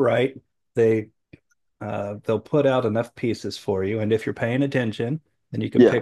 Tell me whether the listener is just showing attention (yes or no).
yes